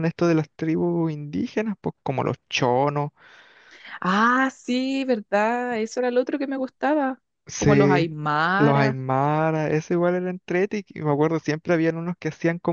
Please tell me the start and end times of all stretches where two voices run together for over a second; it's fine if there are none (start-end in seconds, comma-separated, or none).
none